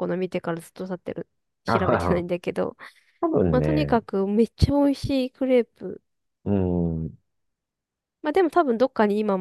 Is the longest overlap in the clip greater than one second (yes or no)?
no